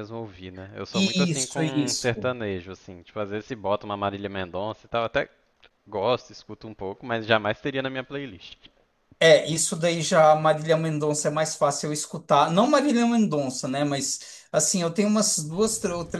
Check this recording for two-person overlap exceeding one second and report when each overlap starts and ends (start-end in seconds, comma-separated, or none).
0.9-2.3